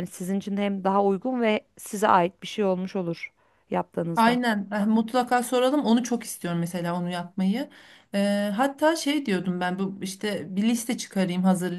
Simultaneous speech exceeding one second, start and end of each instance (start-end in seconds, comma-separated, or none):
none